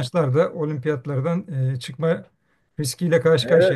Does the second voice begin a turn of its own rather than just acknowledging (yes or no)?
yes